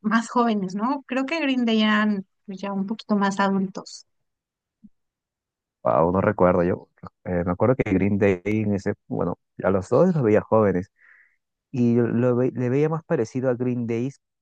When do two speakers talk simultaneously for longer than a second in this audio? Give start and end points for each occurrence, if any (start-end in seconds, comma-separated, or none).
none